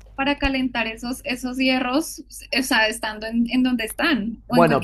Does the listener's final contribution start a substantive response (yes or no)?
yes